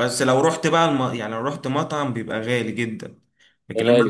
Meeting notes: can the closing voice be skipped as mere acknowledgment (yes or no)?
yes